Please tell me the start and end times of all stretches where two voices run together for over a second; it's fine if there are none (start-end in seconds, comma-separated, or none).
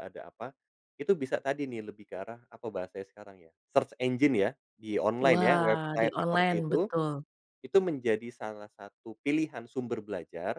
5.3-6.8